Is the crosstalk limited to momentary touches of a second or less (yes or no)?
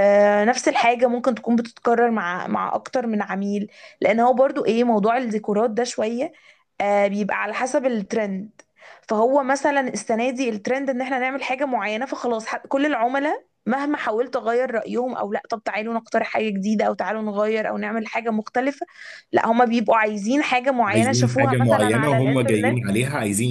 no